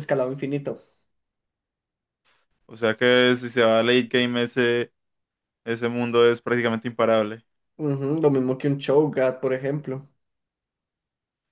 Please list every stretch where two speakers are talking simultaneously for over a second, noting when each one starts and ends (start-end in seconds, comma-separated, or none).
none